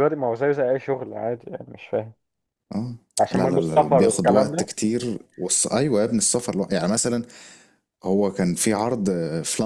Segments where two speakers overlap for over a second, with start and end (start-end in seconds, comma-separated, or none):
3.3-4.7